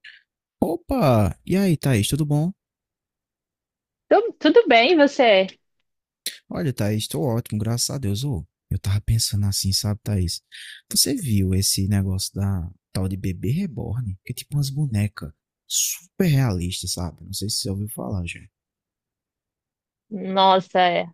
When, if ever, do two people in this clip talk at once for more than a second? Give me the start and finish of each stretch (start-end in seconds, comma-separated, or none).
none